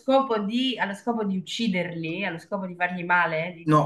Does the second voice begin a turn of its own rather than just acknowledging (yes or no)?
yes